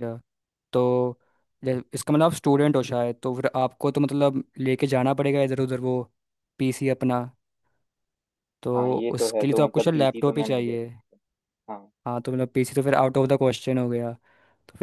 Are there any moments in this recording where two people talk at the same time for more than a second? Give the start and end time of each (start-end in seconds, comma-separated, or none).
9.2-10.9